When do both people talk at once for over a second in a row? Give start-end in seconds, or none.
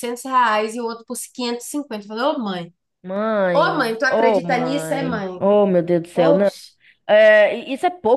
3.5-5.3